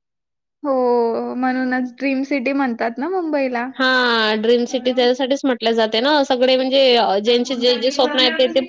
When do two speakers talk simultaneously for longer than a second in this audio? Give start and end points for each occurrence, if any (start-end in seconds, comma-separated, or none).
none